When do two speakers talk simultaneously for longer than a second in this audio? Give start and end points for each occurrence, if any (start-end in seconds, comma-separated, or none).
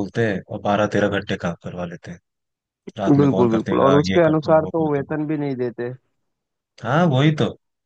3.2-5.1